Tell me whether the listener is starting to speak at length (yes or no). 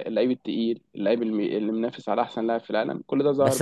yes